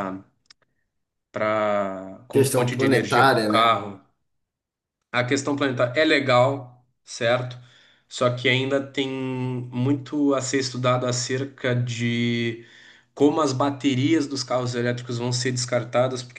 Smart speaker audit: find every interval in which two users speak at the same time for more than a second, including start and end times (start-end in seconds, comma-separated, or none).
2.3-3.8